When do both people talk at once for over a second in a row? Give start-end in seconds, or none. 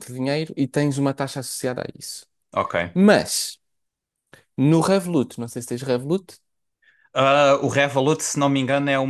none